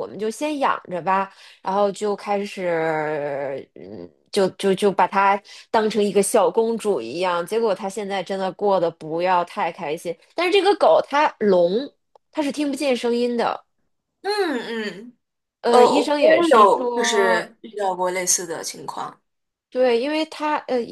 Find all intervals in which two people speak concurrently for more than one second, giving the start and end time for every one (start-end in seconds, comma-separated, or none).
15.7-17.5